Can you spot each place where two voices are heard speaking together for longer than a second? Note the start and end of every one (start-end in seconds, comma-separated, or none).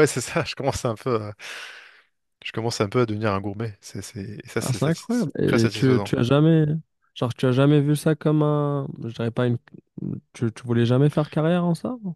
4.6-6.1